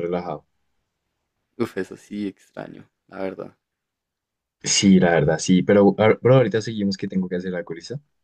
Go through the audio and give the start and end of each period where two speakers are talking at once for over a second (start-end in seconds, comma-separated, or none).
none